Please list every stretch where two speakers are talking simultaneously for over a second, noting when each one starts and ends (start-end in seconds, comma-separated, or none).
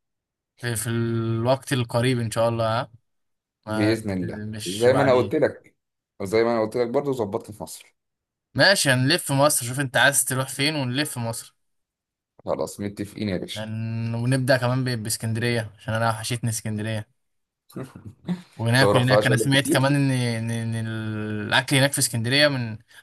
3.7-5.3, 18.7-20.0